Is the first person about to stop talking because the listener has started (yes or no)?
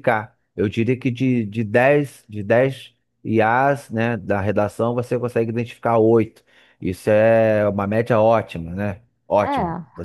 no